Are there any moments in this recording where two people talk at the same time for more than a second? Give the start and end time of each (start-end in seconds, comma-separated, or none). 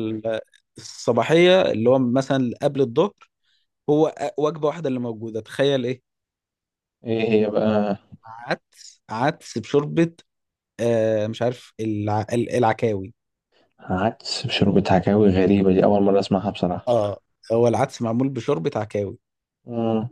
none